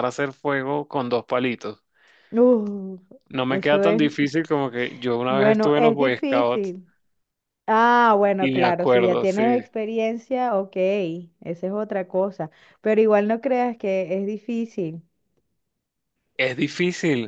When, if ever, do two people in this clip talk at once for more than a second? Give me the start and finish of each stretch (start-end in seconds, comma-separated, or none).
5.3-6.8, 8.4-9.6